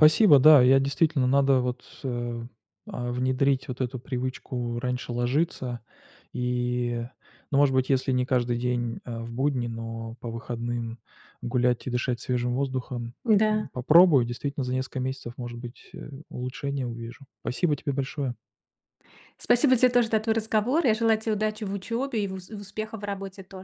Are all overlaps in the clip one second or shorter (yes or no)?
yes